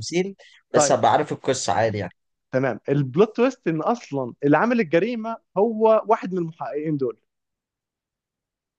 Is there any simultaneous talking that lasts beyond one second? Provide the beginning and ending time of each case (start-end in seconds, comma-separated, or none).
none